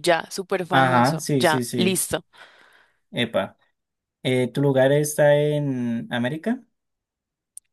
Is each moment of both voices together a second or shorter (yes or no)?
no